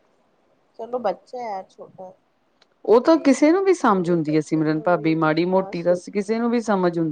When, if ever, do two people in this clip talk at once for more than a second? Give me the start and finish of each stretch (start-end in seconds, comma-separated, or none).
3.1-6.4